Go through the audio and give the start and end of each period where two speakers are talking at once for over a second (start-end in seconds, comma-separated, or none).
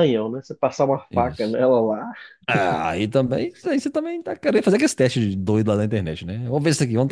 none